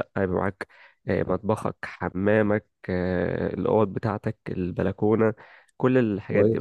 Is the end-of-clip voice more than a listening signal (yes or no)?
yes